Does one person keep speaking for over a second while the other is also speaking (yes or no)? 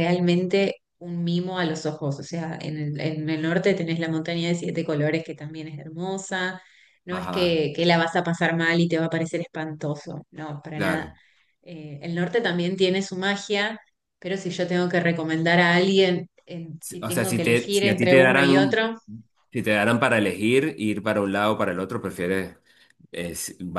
yes